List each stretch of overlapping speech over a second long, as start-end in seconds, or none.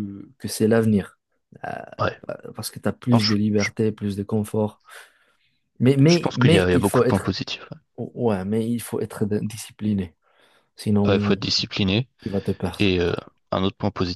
6.1-7.3